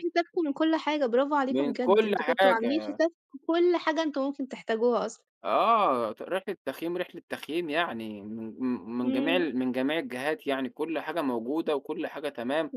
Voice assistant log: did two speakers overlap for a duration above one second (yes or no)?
yes